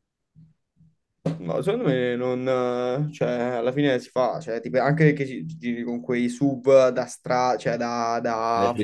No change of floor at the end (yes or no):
no